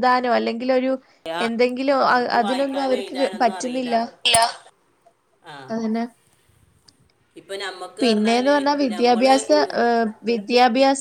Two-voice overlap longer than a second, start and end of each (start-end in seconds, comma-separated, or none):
2.4-3.9